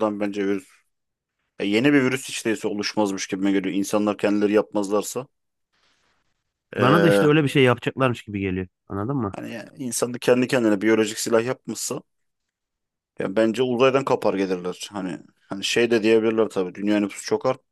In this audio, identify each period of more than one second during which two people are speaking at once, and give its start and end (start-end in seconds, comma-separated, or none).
none